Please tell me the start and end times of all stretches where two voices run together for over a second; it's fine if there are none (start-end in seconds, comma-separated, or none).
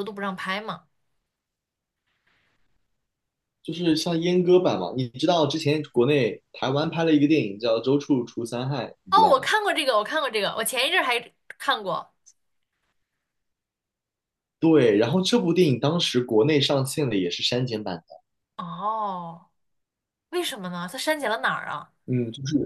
none